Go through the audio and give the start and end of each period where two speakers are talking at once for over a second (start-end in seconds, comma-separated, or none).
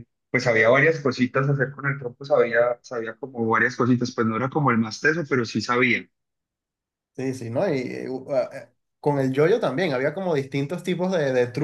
none